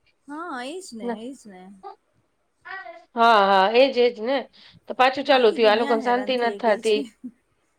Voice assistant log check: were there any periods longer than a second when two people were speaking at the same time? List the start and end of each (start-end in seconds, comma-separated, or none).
5.4-7.0